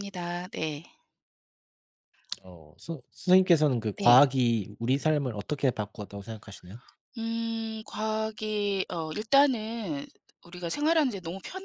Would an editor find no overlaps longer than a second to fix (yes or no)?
yes